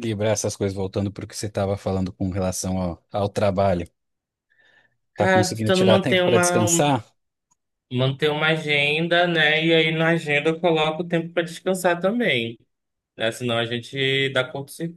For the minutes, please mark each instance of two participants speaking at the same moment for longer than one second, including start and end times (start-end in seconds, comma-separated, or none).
5.1-6.9